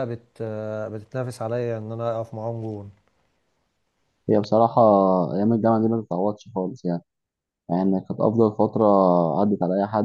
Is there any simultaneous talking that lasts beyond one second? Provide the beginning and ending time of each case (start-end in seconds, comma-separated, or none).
none